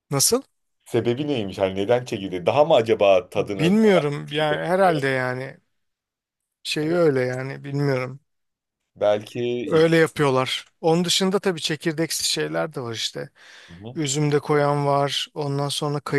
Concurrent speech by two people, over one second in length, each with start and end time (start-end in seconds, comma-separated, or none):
3.4-5.0